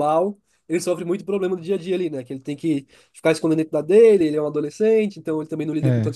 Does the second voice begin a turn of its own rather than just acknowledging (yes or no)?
no